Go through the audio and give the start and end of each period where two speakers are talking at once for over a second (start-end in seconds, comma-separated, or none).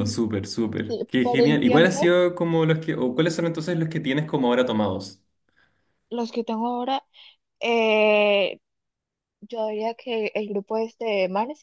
0.9-2.1